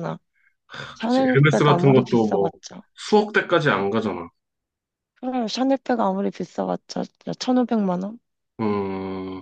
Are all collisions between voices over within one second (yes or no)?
no